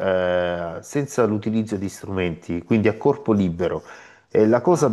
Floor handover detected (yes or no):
no